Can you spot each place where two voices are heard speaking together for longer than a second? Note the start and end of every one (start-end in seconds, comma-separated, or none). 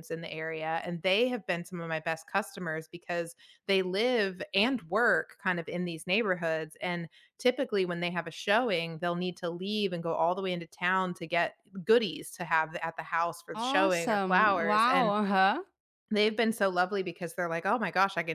13.5-15.1